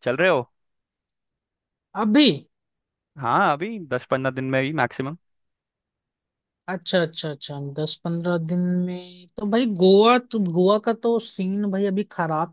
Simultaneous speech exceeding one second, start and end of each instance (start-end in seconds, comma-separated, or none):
none